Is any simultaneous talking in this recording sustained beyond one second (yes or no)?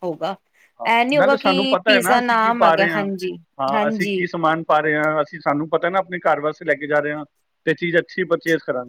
yes